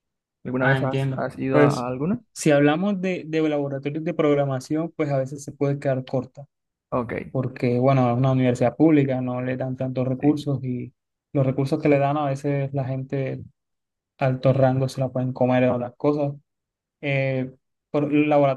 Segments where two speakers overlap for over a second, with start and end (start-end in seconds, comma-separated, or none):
0.6-1.9